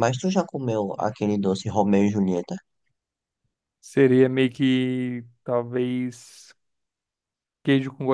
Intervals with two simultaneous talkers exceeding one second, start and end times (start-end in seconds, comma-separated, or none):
none